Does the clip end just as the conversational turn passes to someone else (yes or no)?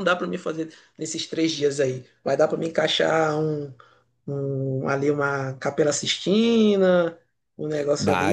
yes